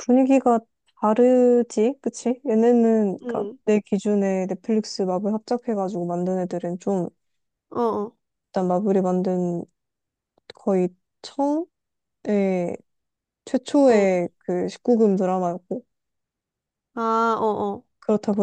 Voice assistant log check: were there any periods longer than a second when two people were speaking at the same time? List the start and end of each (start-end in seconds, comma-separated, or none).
none